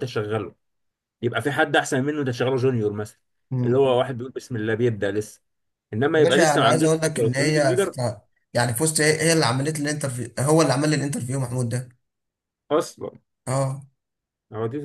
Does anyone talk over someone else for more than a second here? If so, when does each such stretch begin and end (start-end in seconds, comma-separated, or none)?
6.1-8.0